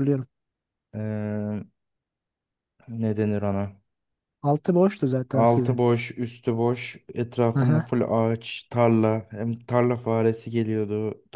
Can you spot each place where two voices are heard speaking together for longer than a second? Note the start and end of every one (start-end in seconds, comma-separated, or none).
none